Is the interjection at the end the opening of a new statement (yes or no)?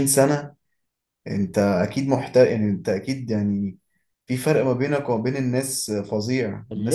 yes